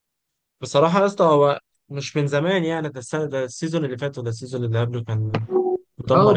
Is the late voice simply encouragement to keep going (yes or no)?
no